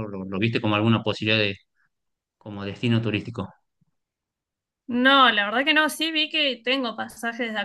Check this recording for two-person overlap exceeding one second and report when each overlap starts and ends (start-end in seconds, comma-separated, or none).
none